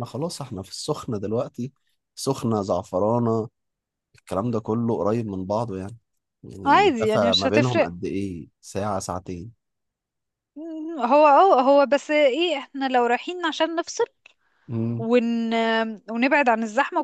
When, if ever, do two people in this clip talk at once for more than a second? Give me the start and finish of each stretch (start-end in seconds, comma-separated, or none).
6.6-7.9